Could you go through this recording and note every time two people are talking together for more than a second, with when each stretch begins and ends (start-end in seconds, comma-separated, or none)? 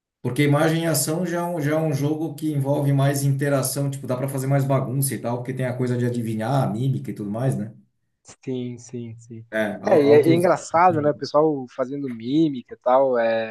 9.9-11.2